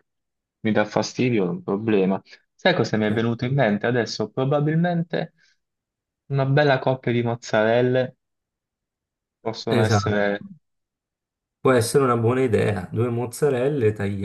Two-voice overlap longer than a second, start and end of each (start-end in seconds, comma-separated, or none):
none